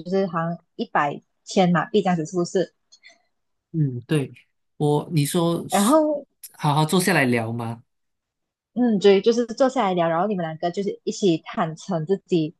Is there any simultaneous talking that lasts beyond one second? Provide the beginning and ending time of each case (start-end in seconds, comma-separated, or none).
none